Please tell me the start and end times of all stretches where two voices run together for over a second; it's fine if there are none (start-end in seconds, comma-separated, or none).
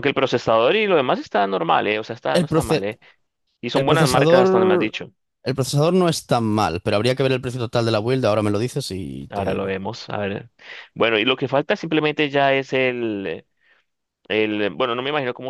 3.7-4.9